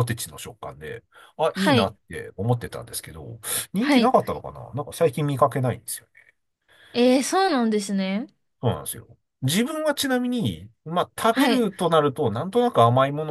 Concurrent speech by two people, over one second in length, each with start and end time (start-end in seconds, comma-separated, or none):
none